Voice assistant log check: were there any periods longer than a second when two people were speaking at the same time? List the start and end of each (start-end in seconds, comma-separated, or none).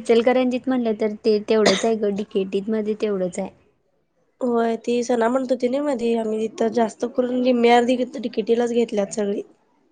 none